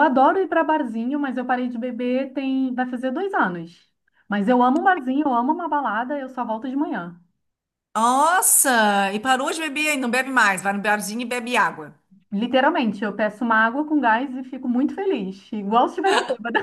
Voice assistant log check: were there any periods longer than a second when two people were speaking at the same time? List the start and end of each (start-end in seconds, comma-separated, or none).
none